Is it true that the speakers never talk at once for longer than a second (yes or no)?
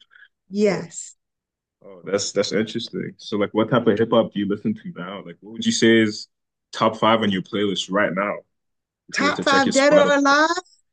no